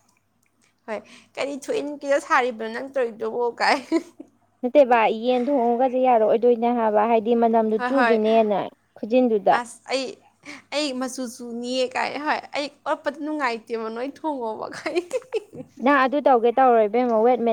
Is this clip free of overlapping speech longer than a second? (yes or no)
yes